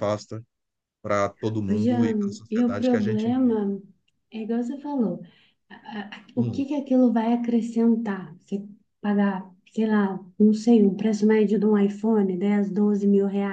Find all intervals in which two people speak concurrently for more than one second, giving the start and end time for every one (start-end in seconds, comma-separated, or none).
1.7-3.6